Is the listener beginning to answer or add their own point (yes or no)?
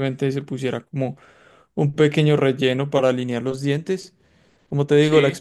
no